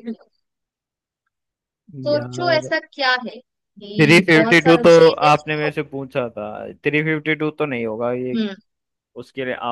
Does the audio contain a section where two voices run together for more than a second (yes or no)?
yes